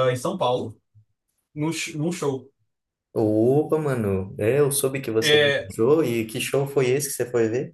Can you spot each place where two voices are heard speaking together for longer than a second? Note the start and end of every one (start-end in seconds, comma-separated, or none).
none